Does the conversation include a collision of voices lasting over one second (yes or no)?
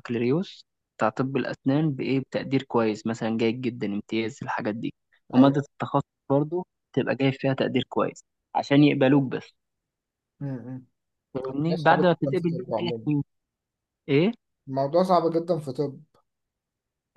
yes